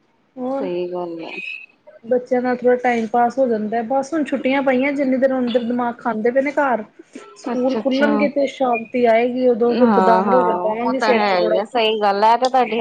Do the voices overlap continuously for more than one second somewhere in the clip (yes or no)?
yes